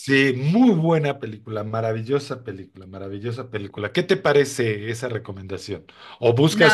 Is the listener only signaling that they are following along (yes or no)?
yes